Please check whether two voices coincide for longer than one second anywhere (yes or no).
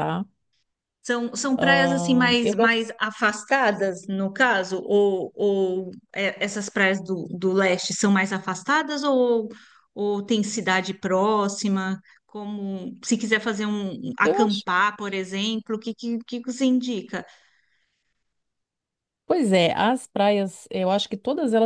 yes